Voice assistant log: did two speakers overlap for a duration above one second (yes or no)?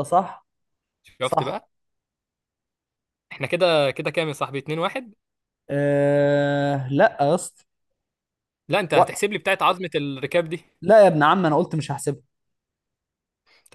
no